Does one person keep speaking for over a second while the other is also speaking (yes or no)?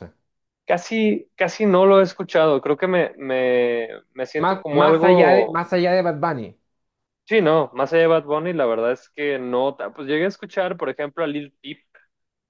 yes